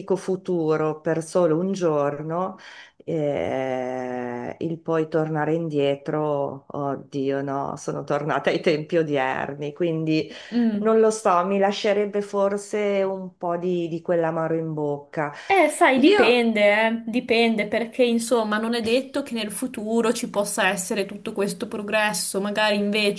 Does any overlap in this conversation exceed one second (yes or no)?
no